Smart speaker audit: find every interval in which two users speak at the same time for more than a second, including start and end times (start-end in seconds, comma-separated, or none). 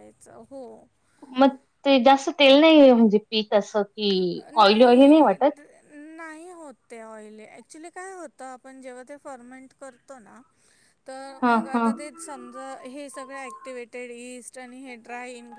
none